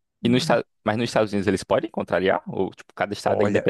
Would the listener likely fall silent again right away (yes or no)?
no